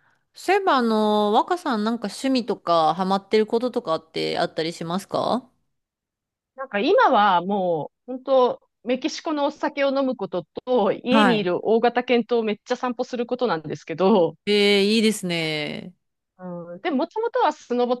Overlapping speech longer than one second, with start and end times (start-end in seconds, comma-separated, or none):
none